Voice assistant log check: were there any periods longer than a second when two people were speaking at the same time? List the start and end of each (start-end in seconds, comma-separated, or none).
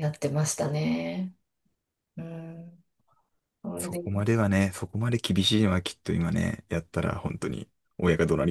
none